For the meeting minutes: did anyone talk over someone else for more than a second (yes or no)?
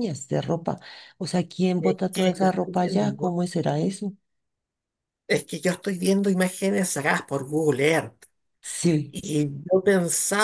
yes